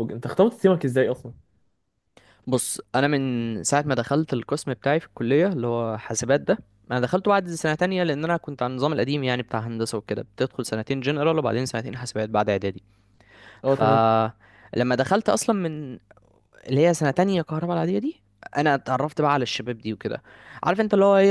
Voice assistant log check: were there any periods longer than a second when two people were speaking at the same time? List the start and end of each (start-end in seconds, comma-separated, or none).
none